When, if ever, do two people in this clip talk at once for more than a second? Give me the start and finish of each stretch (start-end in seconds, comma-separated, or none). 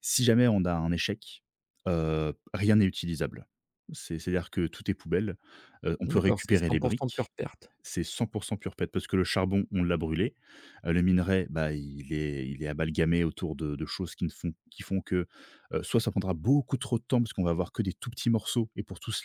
6.0-7.3